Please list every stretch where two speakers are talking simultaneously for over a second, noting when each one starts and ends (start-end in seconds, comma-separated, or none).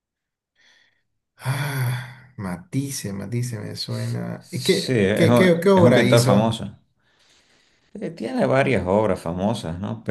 4.4-6.6